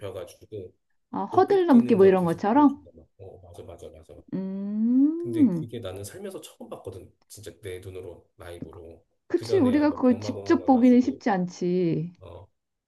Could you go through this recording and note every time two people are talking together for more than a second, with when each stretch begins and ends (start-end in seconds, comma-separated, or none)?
1.3-2.8, 9.3-11.2